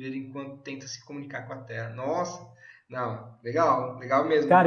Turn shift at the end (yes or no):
yes